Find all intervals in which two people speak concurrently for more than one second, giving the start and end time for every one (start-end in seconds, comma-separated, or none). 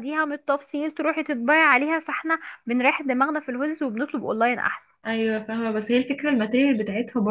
none